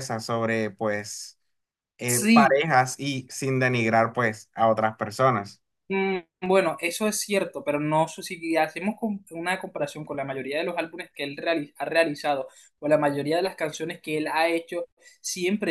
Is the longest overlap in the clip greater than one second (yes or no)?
no